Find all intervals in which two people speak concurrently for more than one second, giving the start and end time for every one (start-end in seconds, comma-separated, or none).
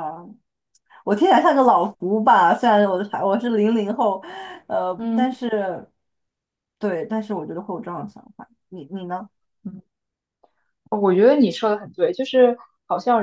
none